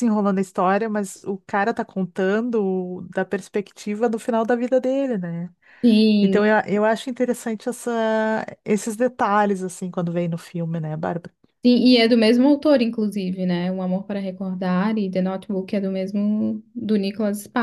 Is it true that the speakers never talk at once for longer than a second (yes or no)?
yes